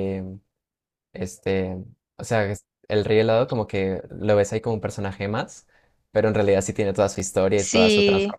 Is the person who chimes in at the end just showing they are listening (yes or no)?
no